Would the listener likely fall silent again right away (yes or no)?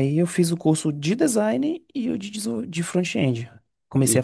no